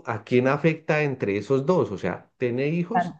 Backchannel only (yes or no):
yes